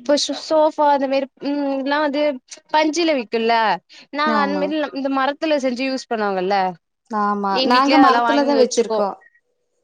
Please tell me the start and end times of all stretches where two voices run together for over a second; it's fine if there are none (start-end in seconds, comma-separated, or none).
7.6-9.1